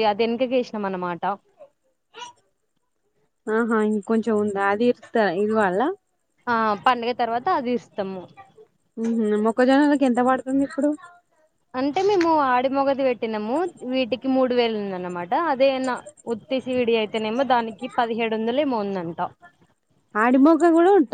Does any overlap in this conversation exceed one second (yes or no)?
no